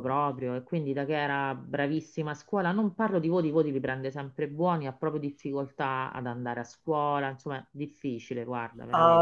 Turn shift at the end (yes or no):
yes